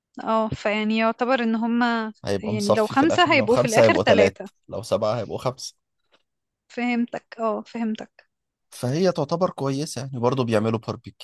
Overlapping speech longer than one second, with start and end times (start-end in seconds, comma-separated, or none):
2.2-4.5